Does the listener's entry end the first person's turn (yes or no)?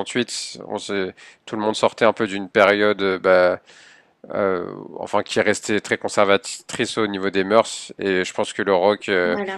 no